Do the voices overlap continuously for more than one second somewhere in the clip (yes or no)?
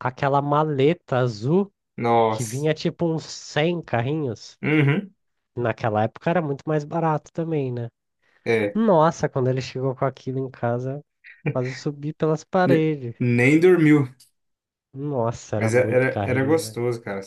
yes